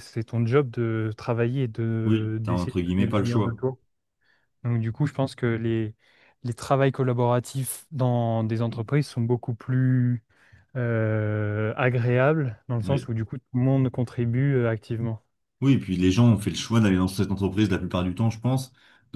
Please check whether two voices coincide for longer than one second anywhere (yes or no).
yes